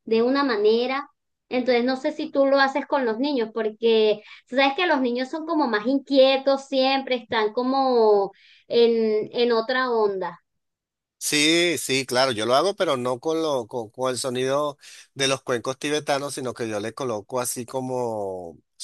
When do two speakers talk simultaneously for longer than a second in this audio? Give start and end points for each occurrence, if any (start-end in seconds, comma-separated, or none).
none